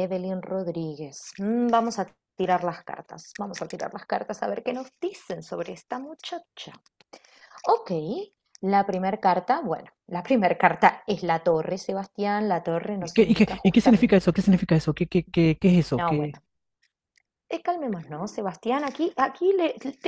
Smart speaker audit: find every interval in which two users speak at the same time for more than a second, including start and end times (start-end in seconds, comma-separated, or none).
13.0-14.2